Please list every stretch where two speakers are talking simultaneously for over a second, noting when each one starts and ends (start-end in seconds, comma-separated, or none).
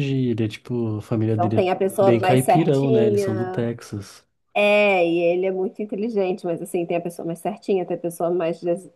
1.2-3.7